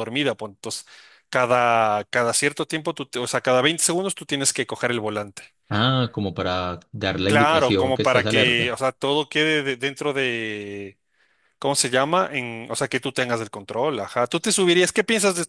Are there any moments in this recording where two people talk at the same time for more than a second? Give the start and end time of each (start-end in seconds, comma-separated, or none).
7.3-8.8